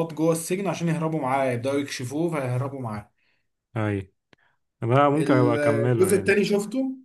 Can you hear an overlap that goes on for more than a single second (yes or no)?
yes